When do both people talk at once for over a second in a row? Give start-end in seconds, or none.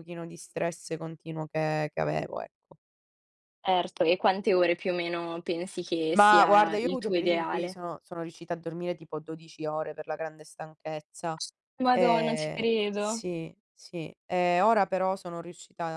6.2-7.8, 11.9-13.2